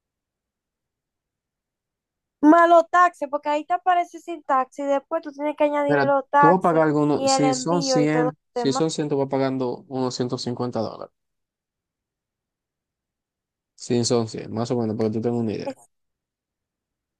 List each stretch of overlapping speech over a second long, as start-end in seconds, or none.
5.9-8.8